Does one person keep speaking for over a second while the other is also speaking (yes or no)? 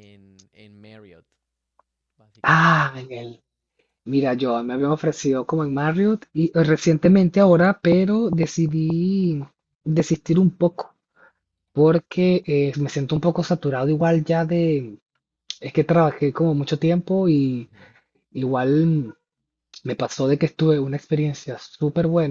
no